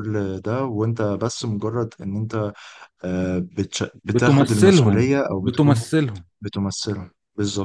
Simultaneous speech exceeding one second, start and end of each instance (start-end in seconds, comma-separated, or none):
4.0-5.8